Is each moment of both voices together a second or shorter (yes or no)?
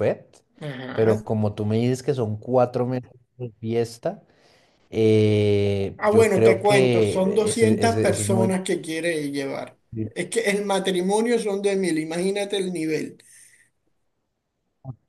no